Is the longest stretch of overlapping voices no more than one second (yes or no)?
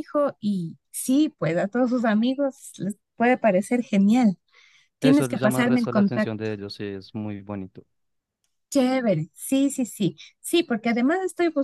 no